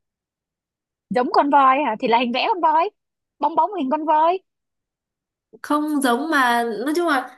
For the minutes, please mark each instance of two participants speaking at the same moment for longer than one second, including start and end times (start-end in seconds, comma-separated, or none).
none